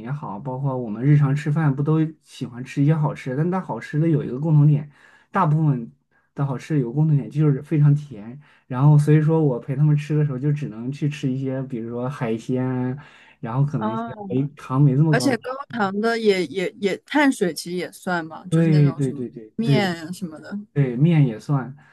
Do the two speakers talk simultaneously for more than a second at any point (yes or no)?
yes